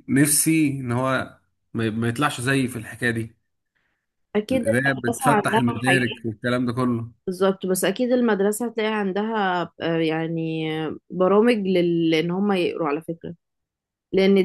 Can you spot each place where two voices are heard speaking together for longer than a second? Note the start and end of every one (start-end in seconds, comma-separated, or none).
4.5-6.2